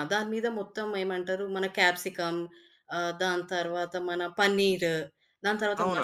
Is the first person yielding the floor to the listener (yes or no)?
yes